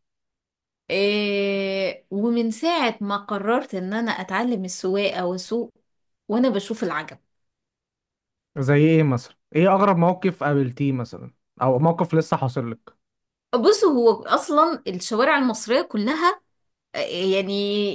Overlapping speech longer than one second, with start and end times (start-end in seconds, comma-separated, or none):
none